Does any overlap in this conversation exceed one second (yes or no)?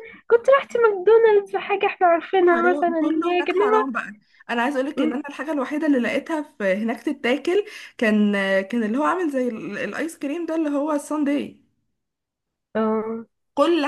yes